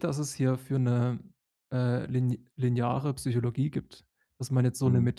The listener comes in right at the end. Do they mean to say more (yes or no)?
no